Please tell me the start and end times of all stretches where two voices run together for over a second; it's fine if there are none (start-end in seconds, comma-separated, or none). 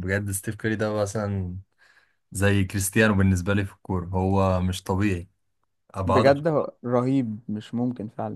none